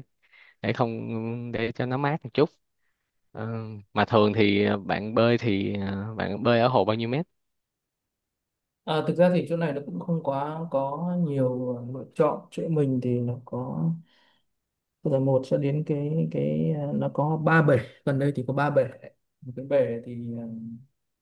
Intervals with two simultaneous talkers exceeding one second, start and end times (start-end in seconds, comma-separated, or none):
none